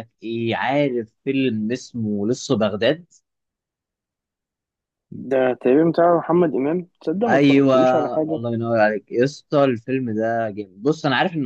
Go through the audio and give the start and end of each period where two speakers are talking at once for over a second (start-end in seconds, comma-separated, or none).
none